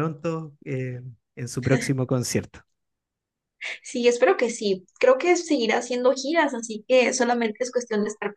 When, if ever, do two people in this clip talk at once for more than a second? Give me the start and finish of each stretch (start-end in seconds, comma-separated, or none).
none